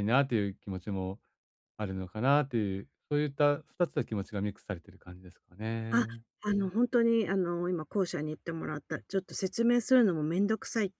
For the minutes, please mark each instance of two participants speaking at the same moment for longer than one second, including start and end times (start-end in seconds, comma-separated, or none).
none